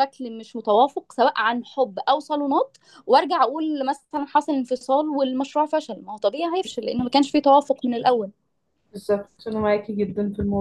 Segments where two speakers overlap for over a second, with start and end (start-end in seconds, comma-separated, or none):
none